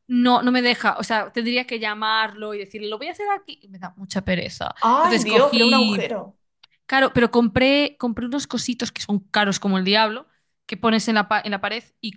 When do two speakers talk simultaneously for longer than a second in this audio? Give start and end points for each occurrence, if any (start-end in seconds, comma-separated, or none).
4.8-6.1